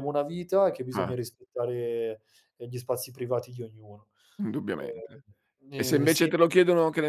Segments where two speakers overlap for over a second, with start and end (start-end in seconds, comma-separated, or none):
none